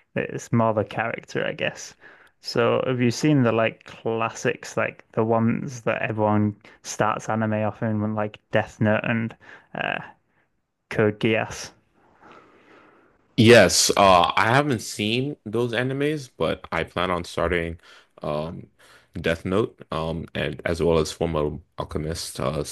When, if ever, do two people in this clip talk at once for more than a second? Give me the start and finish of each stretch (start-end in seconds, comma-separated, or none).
none